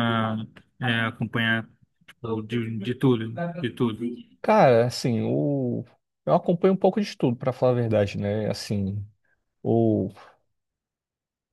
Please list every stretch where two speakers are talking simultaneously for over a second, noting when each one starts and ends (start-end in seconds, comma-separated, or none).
none